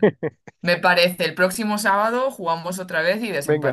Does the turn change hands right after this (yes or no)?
yes